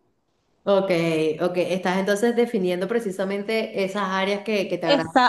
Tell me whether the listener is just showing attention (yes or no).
no